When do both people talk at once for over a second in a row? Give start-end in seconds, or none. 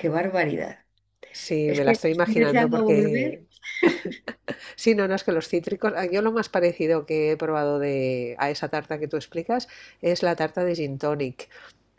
1.7-3.5